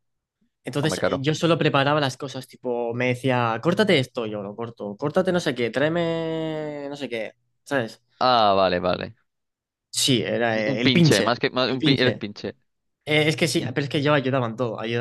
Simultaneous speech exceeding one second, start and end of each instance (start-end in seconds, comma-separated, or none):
10.6-12.2